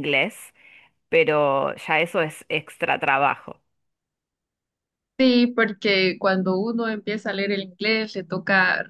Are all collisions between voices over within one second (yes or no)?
yes